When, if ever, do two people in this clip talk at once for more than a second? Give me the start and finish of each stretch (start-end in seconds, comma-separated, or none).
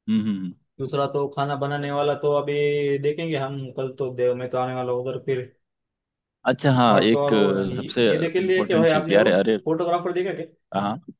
6.9-9.6